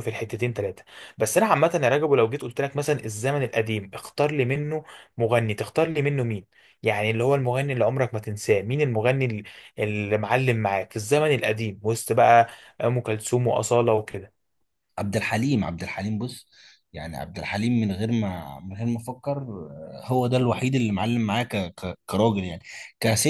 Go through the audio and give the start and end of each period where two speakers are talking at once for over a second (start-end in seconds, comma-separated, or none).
none